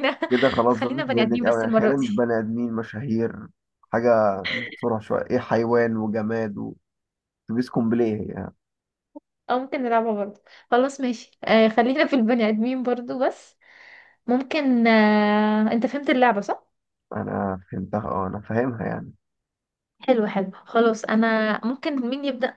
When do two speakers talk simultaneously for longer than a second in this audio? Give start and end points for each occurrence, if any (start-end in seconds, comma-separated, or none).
0.7-2.1